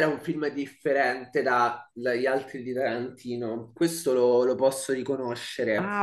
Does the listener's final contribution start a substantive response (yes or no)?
yes